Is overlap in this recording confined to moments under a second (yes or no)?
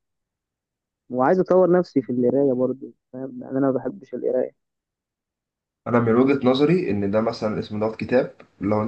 yes